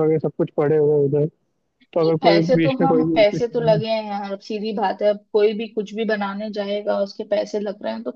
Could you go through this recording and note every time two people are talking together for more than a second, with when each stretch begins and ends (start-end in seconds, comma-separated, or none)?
1.9-3.8